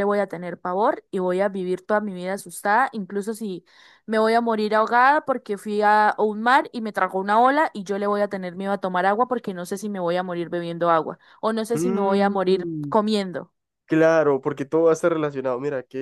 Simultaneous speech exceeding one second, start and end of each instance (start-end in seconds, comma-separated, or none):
11.7-12.9